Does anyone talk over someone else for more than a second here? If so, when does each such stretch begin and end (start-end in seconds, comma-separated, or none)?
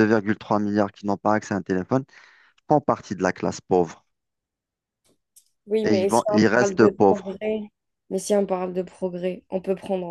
5.8-7.4